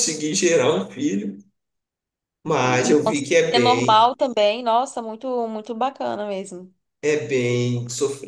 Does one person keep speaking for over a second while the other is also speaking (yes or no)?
yes